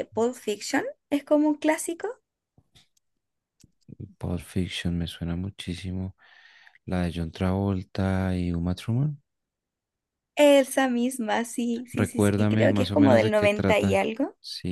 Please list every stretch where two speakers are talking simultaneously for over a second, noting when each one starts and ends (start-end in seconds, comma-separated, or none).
11.9-14.0